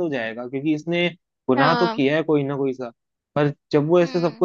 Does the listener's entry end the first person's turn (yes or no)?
no